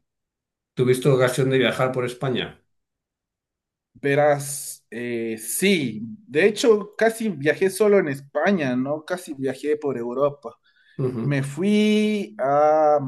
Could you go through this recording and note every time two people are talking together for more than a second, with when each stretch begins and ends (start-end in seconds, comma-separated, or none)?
none